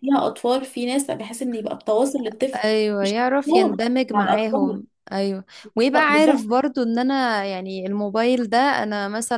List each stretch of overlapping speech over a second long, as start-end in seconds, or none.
3.0-4.8